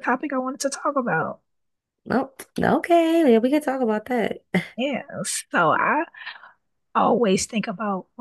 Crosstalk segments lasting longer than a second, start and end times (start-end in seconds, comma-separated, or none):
none